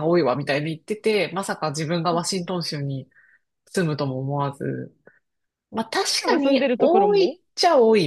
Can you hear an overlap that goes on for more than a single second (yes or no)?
yes